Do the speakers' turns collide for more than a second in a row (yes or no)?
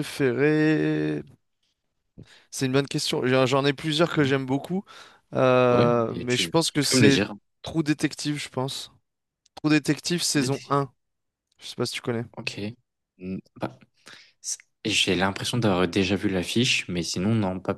yes